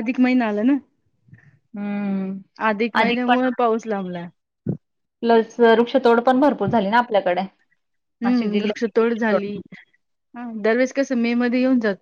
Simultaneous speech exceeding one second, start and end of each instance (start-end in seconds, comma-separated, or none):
8.2-9.5